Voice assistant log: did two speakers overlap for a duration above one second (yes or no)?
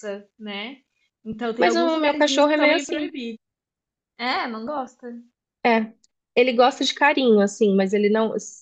yes